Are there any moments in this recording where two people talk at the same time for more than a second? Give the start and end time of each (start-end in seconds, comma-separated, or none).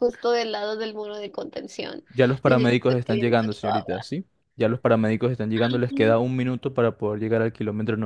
2.5-4.0